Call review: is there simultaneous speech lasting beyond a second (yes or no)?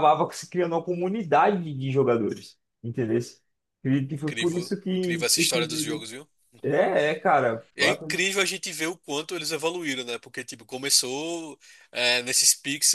yes